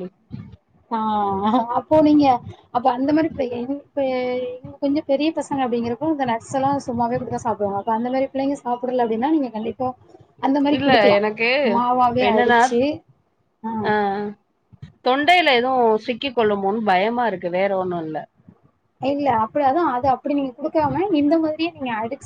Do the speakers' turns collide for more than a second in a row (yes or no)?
no